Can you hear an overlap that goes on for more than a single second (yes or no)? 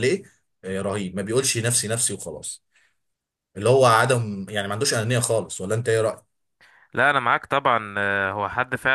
no